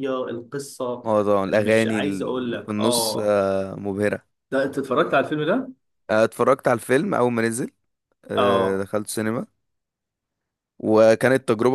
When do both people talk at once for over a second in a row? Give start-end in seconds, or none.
1.5-3.4